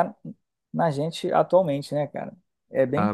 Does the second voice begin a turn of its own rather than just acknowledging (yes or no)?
yes